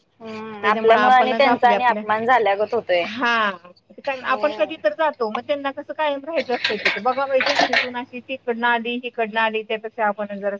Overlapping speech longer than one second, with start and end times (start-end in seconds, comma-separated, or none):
0.6-2.0